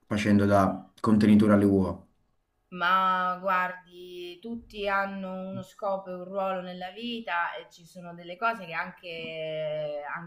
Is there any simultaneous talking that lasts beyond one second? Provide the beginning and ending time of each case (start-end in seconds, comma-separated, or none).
none